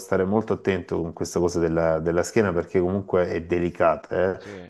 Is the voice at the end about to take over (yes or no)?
no